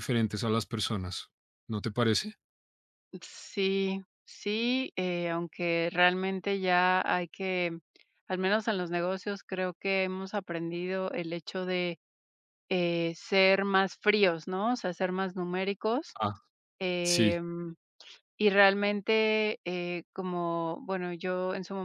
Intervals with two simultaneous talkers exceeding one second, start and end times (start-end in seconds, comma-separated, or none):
none